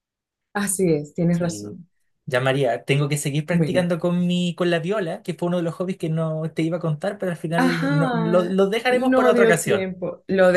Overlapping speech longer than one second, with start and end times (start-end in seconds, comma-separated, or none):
7.6-9.9